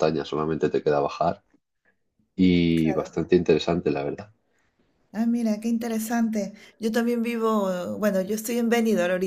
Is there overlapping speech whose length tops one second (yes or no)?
no